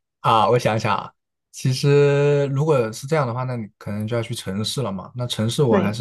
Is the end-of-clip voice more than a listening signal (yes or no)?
no